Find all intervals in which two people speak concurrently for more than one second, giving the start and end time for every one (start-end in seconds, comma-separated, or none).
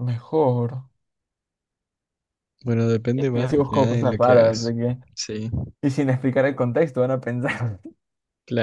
3.1-4.7